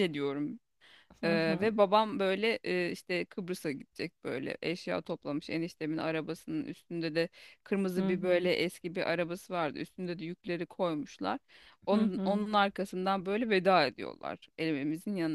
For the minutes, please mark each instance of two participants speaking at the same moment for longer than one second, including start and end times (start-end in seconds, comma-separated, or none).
none